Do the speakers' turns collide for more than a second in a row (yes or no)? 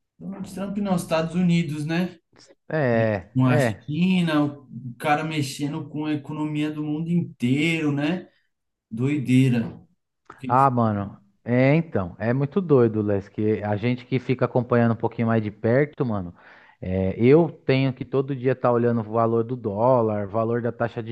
no